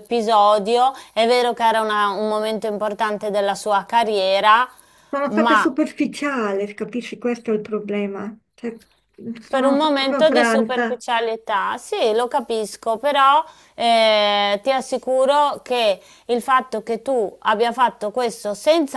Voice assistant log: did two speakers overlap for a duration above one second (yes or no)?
yes